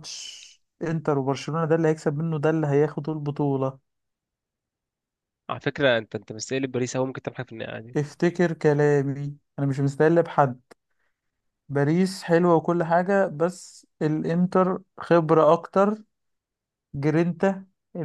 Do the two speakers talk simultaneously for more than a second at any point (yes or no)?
no